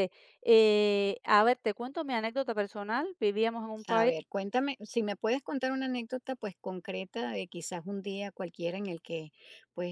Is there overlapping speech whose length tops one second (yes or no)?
no